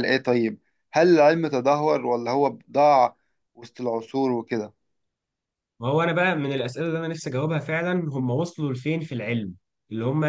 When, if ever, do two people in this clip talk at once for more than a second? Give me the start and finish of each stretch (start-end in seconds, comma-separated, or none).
none